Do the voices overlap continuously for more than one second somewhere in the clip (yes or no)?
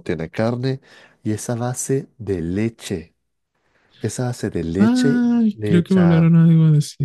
yes